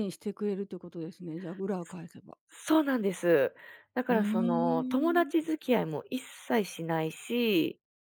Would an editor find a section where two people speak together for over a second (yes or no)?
yes